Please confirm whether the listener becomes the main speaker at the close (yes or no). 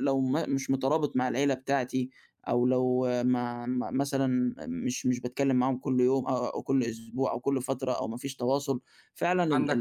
no